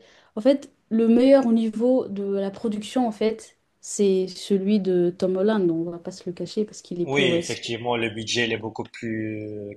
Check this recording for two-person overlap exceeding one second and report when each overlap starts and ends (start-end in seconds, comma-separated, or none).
none